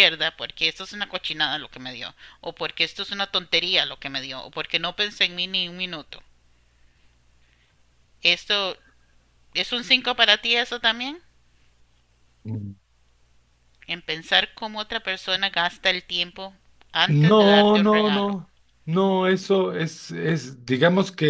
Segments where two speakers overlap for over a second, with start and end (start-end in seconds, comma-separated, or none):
17.1-18.4